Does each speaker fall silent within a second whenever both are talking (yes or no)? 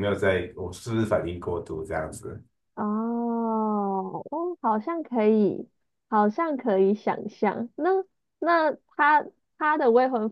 yes